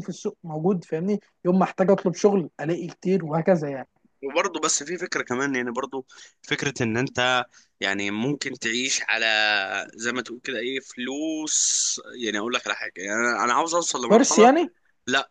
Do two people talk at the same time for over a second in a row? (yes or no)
no